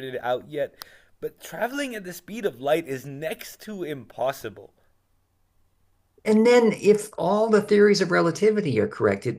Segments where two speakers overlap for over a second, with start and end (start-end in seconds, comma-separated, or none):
none